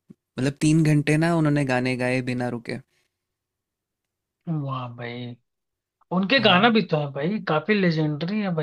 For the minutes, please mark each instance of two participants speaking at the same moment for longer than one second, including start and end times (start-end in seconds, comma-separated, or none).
none